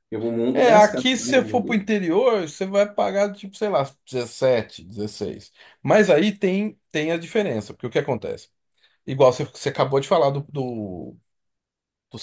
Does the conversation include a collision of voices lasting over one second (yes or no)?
yes